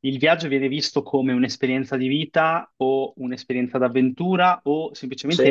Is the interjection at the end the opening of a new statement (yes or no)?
no